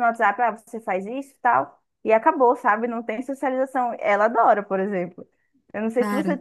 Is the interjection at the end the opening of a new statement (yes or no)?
no